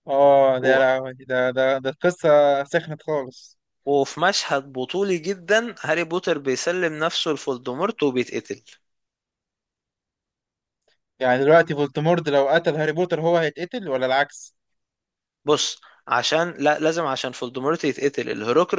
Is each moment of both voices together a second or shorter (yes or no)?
yes